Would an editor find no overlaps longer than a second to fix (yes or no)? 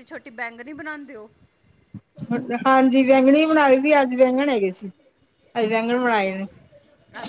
yes